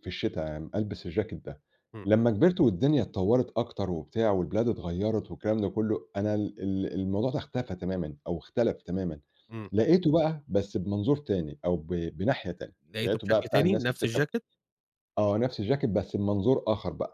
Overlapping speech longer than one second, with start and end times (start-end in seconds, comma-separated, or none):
12.9-14.2